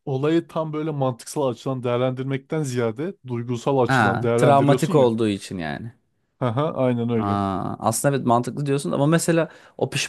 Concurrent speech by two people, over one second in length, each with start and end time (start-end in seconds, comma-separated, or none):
3.9-5.1